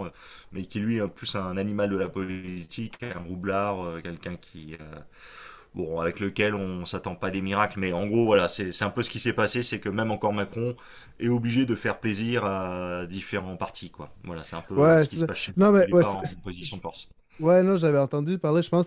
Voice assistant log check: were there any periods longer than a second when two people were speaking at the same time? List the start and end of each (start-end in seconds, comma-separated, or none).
14.8-16.8